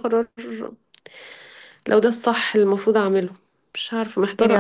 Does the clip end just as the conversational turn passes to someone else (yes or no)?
yes